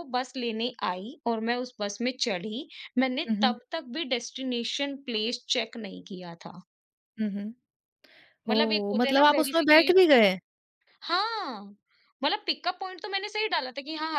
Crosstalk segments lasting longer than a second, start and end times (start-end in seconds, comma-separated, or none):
8.5-9.9